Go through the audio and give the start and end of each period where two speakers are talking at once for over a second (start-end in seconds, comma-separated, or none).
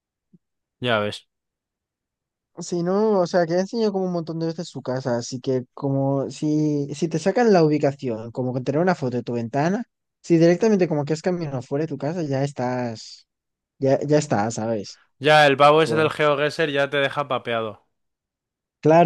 none